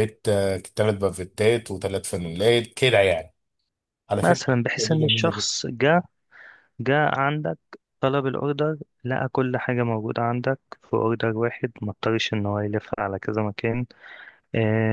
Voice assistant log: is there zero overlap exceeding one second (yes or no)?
no